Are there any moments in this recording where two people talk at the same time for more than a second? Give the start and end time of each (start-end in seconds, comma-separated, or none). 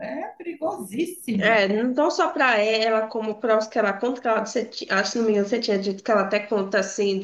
none